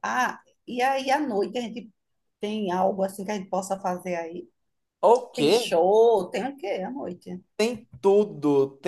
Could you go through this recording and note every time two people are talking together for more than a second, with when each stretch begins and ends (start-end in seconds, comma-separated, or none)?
none